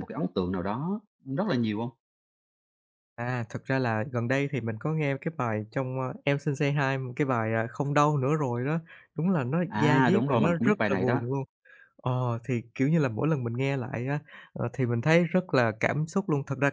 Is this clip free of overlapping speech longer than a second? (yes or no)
no